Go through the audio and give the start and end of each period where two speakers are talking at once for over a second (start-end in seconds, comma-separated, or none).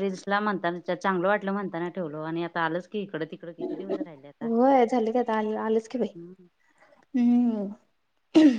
none